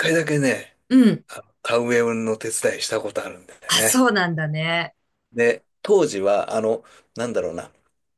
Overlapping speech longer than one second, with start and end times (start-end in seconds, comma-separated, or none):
none